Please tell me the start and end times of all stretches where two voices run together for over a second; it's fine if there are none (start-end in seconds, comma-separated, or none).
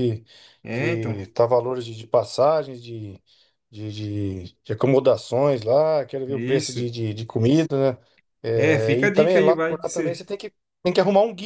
8.5-10.2